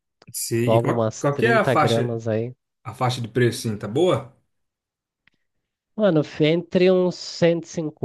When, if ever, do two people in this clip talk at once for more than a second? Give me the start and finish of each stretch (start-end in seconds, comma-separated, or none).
0.6-2.2